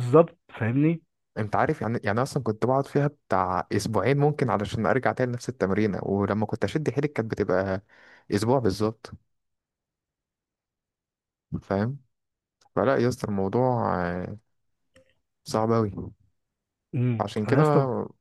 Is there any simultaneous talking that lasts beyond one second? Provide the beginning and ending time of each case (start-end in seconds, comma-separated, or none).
none